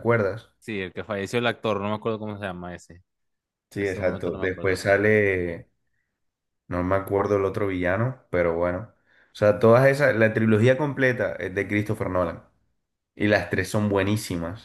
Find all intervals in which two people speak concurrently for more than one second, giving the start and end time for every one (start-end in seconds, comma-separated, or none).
3.7-5.0